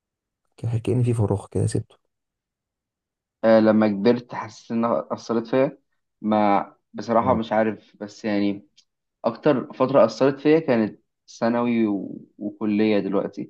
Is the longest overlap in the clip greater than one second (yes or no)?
no